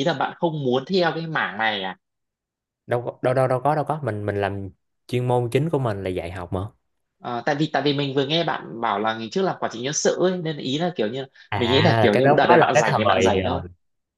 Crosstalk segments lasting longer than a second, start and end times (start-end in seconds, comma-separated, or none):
11.5-13.6